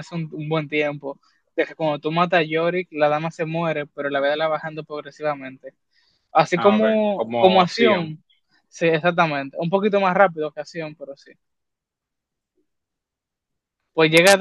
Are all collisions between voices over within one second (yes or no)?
no